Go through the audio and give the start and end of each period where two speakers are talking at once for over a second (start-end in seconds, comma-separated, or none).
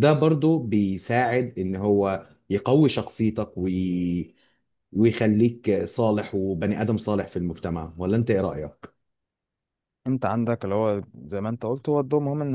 none